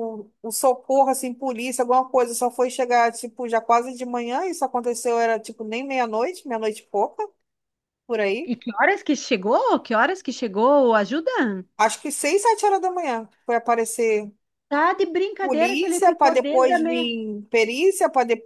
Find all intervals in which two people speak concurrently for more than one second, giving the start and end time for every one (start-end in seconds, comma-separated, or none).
15.4-17.1